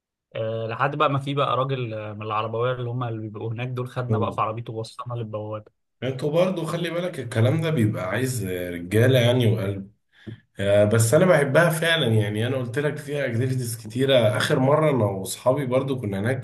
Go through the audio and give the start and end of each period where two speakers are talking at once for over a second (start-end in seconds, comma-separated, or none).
none